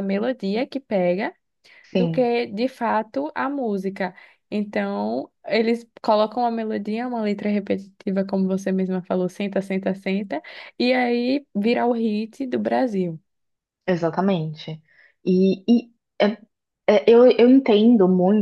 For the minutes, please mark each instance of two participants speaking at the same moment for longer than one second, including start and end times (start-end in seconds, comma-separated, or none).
none